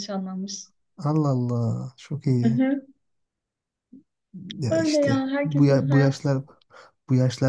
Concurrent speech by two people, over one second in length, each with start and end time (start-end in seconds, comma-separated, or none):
4.7-6.3